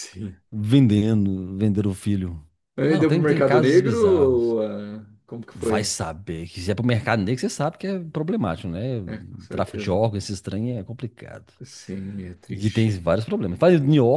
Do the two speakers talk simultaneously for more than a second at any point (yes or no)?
yes